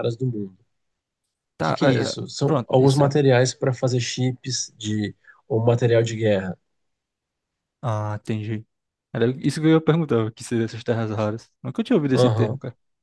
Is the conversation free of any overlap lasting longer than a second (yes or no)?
no